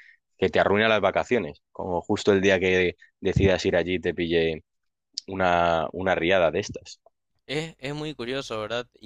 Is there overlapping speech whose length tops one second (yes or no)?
no